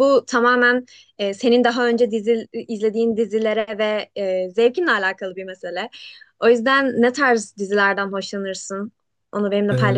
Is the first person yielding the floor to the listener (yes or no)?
yes